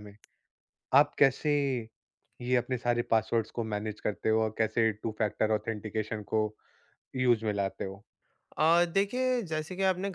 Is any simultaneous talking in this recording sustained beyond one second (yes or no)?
no